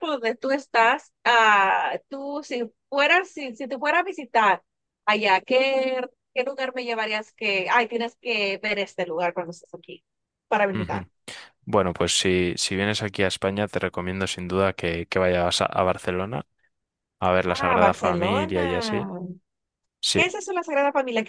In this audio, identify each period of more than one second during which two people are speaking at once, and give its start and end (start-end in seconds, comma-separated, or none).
17.4-18.7